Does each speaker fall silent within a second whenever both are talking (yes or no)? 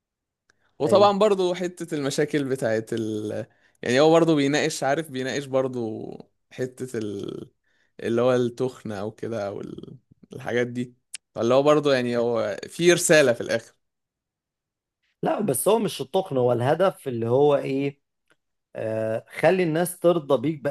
yes